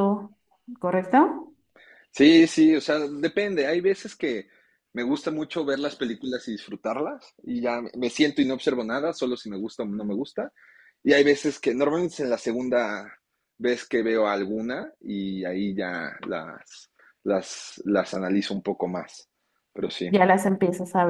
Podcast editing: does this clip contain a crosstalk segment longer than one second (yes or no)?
no